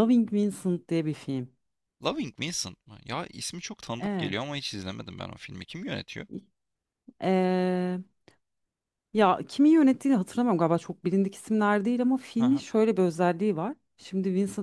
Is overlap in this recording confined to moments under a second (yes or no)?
yes